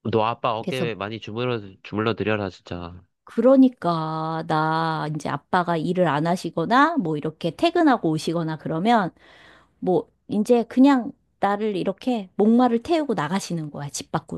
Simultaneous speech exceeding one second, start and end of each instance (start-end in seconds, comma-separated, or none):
none